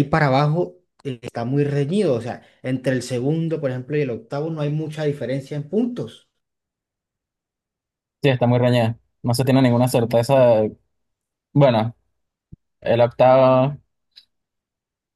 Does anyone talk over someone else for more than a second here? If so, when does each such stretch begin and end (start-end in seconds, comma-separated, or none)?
none